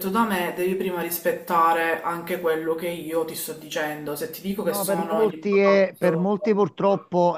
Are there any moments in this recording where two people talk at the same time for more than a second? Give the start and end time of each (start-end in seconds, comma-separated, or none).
4.7-6.3